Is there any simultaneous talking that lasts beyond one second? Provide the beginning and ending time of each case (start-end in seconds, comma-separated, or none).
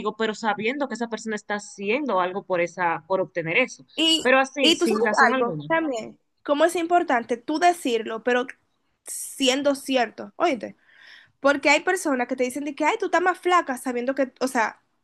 4.2-5.7